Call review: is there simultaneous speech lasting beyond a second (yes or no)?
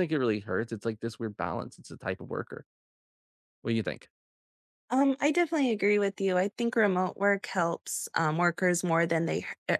no